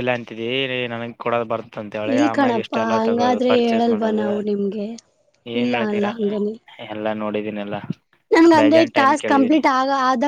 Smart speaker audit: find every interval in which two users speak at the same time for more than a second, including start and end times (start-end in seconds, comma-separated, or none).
2.1-4.3